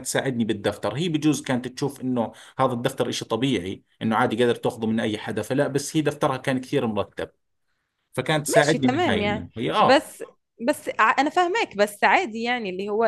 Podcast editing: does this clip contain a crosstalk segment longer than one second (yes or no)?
yes